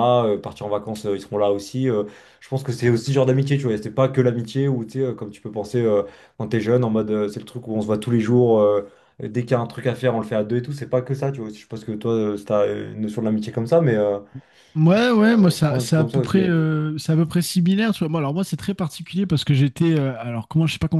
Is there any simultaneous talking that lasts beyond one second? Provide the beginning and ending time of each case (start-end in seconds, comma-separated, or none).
15.2-16.4